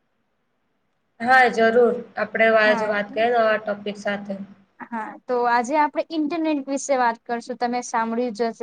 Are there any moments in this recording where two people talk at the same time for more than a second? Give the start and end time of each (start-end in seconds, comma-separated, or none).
none